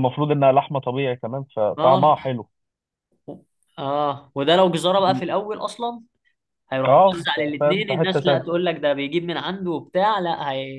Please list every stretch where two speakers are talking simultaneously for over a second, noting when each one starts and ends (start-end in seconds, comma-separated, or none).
6.8-8.5